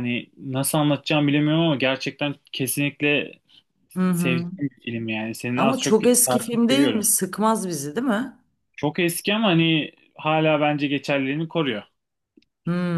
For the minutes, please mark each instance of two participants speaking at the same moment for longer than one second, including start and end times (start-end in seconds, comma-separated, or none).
5.5-7.0